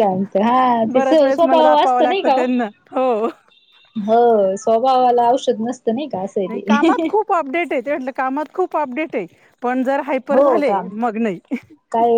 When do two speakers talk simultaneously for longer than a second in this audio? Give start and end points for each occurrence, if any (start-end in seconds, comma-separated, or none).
0.9-2.5